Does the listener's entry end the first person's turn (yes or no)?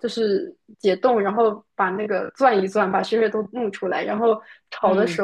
no